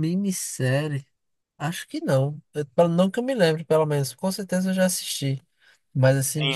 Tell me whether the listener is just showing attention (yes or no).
no